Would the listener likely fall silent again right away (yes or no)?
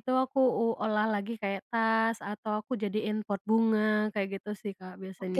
no